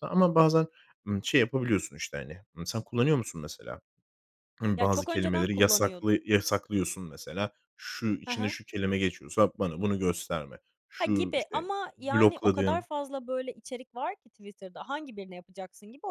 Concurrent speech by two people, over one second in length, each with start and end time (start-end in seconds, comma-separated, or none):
4.8-6.2, 11.0-12.8